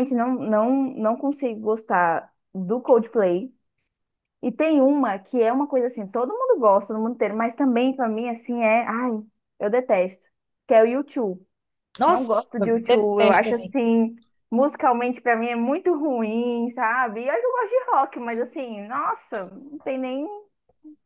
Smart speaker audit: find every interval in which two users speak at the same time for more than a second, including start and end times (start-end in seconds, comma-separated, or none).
12.1-13.7